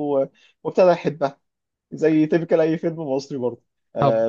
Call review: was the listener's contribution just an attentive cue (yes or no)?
yes